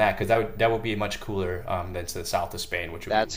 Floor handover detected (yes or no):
no